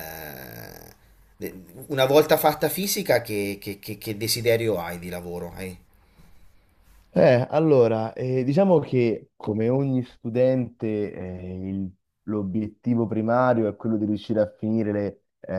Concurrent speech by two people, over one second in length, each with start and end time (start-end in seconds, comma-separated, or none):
none